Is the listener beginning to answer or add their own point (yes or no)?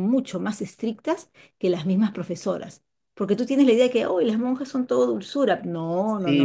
yes